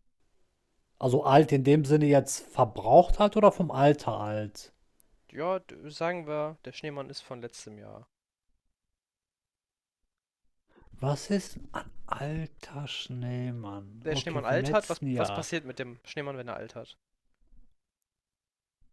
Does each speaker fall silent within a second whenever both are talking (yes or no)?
no